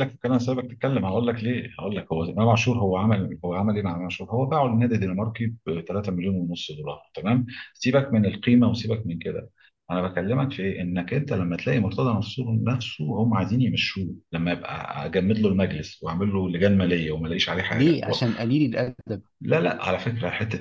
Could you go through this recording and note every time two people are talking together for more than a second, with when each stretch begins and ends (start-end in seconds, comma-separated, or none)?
none